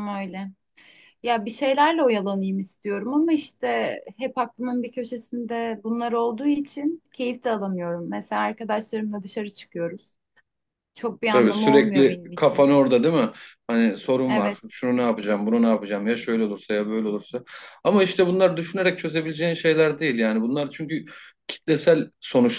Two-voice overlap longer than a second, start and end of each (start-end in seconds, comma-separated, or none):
11.3-12.7